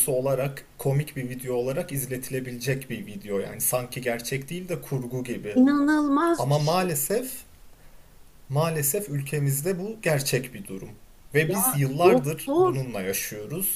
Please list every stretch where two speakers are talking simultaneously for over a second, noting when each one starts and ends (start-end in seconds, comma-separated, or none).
11.5-12.7